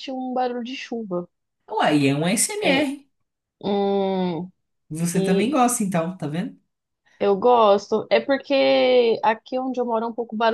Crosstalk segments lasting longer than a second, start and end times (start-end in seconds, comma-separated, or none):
none